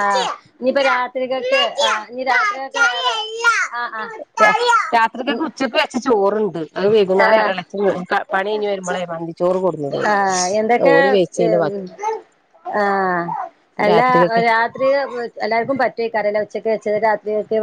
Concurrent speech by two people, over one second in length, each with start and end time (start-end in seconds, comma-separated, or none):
none